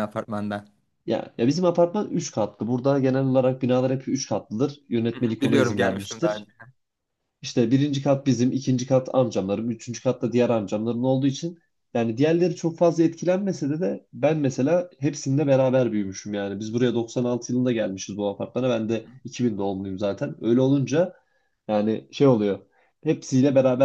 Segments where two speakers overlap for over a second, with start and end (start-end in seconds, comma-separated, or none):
5.1-6.4